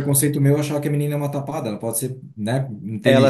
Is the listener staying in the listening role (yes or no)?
no